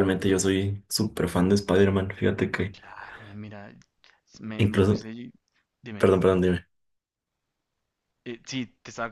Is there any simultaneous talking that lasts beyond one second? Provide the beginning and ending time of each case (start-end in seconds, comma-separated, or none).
none